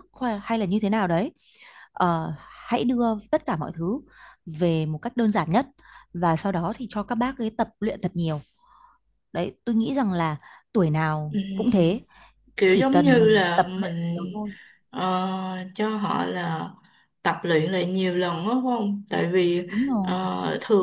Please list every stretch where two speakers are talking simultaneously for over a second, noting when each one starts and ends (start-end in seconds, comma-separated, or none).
12.7-14.2